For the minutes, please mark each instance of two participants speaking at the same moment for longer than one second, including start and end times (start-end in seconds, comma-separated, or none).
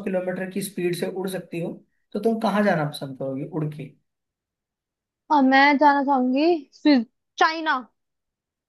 none